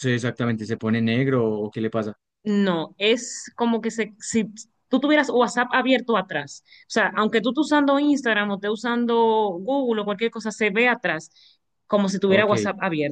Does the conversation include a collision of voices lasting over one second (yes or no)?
no